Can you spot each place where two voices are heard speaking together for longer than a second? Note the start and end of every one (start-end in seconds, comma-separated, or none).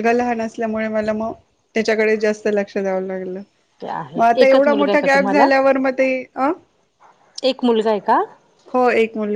3.8-5.5